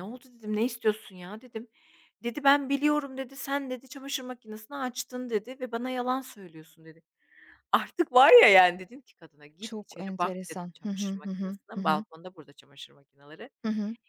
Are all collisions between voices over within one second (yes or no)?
no